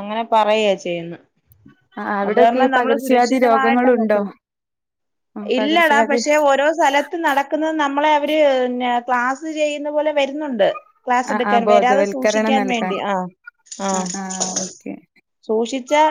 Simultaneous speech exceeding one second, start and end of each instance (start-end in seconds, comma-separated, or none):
2.3-4.2, 11.3-12.9